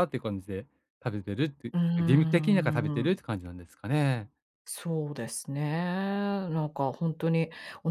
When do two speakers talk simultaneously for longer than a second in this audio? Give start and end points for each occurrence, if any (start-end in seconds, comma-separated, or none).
1.7-3.2